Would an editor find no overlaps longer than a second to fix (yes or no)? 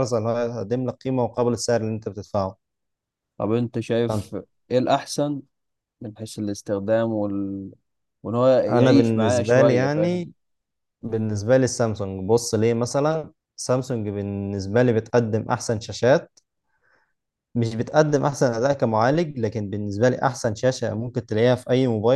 no